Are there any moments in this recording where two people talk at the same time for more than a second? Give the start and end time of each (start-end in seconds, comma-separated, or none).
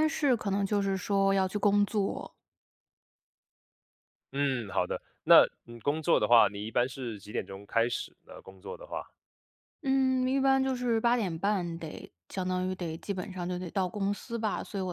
none